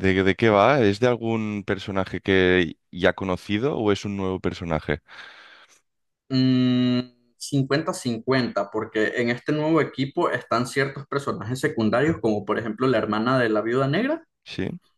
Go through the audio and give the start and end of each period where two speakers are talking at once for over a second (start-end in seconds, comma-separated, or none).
none